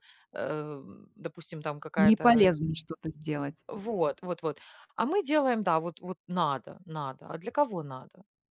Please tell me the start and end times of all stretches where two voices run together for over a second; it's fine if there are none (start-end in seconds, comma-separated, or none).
none